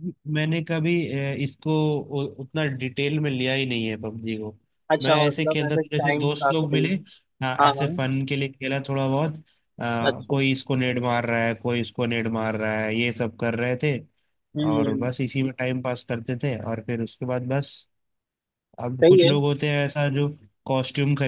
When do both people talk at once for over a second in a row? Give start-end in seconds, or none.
5.0-6.9